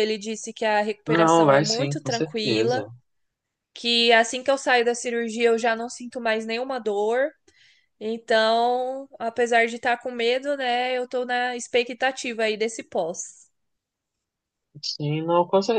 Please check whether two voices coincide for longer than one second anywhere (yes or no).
yes